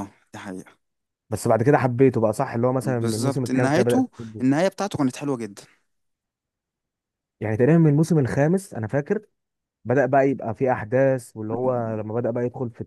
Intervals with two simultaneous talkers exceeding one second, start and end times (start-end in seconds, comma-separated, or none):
2.8-4.4